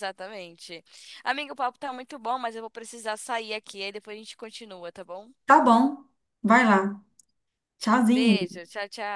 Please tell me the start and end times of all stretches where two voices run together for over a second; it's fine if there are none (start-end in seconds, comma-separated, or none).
none